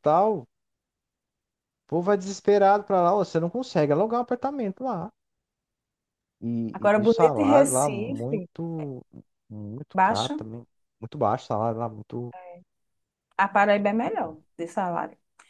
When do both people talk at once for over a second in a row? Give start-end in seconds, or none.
6.7-8.5